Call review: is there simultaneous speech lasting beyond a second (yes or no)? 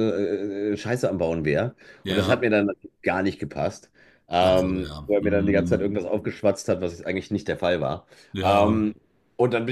yes